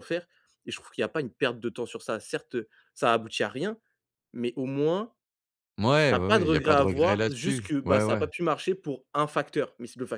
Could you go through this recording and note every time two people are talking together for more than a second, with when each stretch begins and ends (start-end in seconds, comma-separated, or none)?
6.1-8.3